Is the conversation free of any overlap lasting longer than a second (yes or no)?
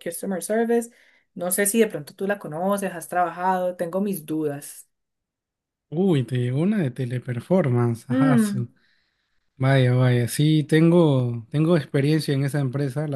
yes